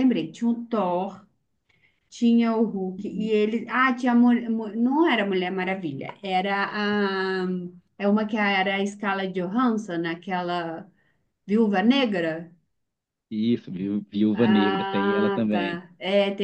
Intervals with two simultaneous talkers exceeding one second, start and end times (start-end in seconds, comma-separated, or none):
14.3-15.8